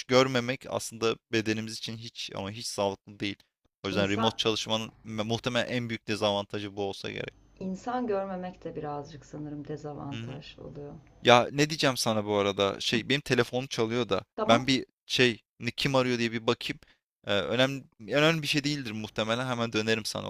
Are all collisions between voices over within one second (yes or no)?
yes